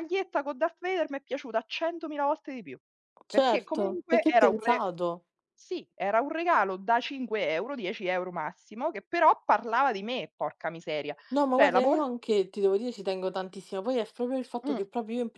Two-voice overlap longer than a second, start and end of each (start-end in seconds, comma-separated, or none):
3.3-4.8